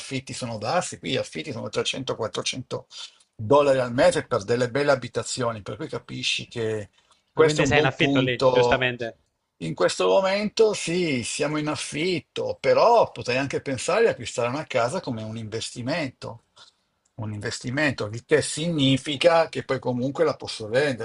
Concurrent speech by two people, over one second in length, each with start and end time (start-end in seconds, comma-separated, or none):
7.3-8.8